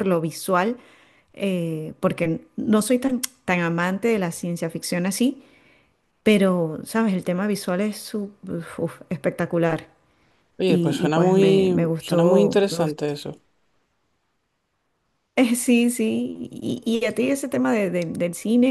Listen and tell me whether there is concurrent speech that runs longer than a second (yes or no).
yes